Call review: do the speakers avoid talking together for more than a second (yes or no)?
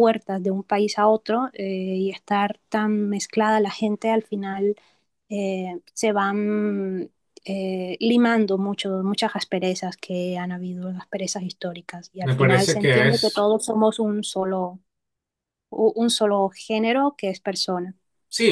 no